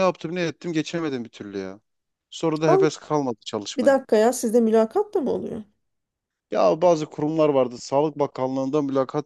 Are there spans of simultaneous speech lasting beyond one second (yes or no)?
no